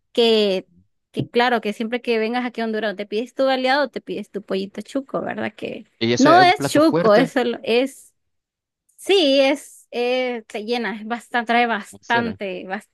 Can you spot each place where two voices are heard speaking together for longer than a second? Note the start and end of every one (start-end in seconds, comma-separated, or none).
6.0-7.3